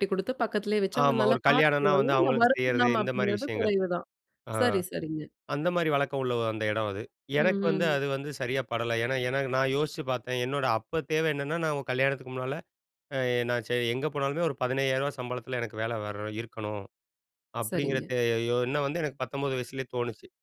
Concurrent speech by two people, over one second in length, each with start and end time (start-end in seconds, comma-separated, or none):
1.0-3.7